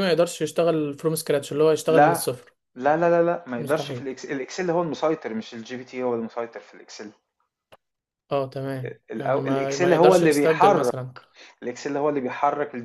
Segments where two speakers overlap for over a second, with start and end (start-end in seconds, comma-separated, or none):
9.1-10.9